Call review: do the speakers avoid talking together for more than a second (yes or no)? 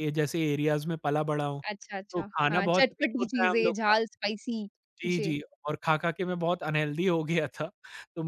no